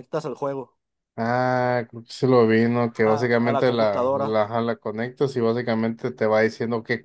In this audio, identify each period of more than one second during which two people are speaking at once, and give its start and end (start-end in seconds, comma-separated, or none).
3.1-4.3